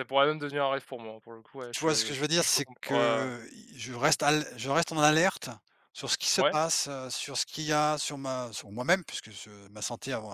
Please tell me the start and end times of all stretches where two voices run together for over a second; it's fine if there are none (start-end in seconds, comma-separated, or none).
1.7-3.3